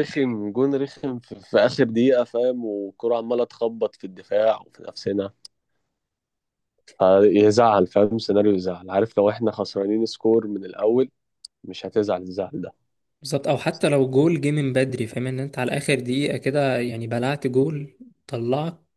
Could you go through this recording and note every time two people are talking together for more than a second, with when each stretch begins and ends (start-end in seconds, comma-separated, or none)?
none